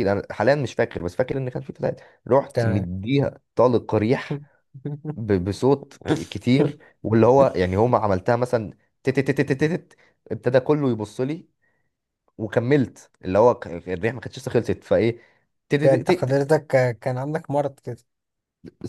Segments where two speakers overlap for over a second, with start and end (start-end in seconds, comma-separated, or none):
none